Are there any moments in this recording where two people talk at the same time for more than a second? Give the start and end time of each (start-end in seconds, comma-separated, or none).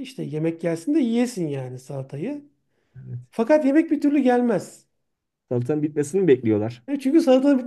none